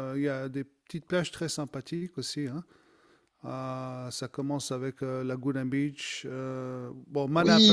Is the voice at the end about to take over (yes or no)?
yes